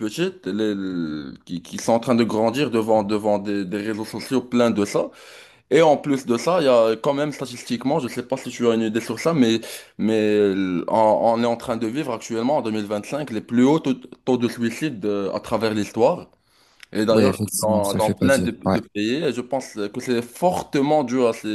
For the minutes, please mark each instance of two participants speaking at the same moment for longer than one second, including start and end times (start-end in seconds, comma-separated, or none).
17.1-18.8